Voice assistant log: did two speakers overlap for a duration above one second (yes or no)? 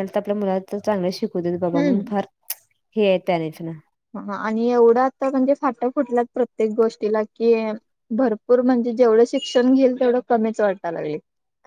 no